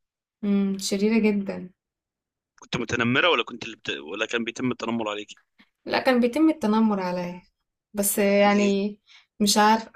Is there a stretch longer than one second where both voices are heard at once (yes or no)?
no